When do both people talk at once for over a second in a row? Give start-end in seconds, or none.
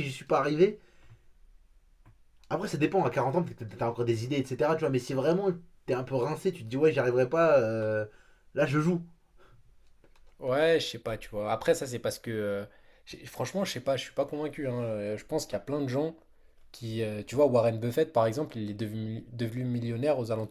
none